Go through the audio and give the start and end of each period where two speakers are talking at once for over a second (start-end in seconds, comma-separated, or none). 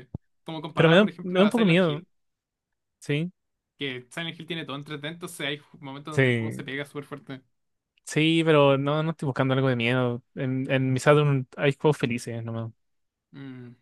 0.7-2.0